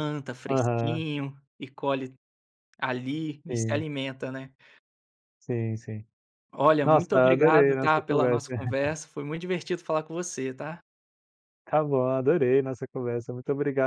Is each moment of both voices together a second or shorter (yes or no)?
no